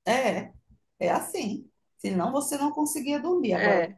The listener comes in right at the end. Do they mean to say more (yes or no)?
no